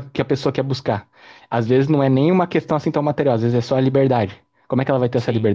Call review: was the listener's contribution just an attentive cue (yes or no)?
no